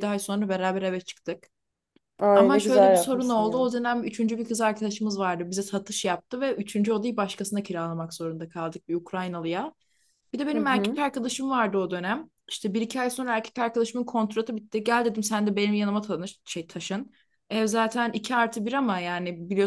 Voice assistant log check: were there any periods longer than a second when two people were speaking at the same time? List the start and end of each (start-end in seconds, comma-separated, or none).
2.3-3.7